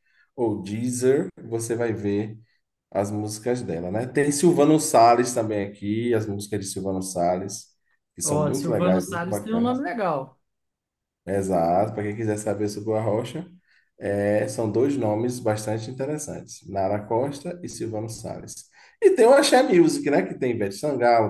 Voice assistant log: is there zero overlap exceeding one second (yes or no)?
no